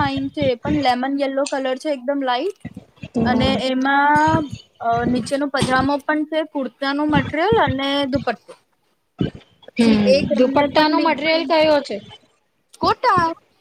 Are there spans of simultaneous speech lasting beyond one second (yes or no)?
yes